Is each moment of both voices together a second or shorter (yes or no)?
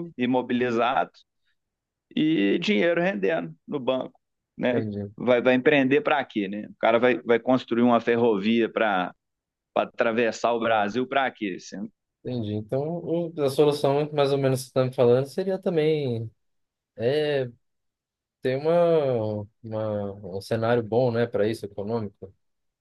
yes